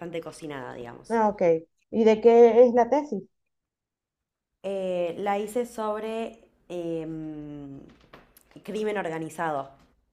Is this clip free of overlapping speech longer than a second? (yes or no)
yes